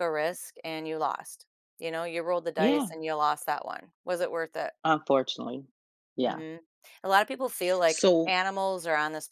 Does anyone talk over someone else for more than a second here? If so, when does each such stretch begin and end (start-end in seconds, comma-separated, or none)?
none